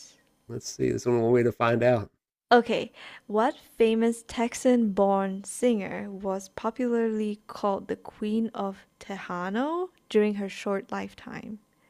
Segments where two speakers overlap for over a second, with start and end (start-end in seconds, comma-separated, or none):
none